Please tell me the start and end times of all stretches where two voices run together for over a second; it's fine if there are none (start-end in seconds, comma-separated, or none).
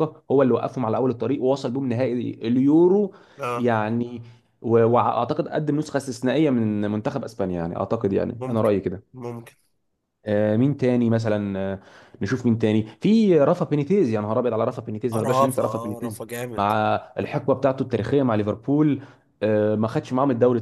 15.1-16.7